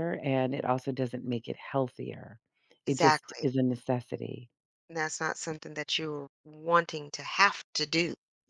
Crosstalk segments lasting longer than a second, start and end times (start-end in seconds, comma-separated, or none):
none